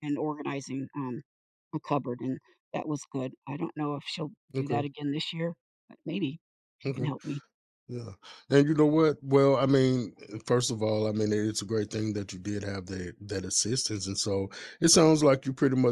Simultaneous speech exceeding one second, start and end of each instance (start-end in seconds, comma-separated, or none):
none